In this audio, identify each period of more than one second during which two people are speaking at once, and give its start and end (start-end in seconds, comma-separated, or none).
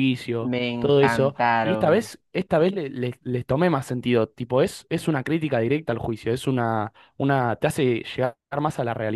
0.5-2.1